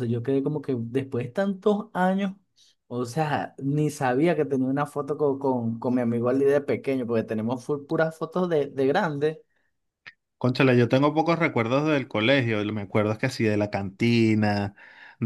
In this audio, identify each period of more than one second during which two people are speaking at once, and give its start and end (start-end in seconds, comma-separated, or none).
none